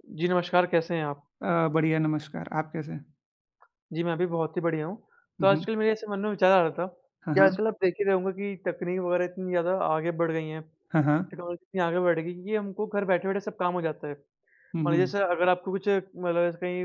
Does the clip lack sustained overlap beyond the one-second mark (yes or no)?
yes